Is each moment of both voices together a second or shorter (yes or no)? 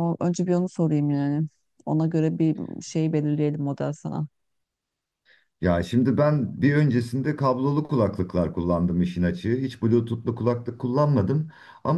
yes